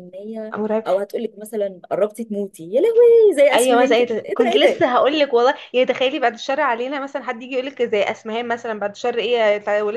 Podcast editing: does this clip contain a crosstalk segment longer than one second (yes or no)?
yes